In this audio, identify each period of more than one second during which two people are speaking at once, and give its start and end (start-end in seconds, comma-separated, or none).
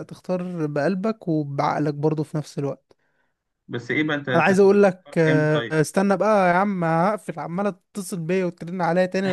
4.3-5.8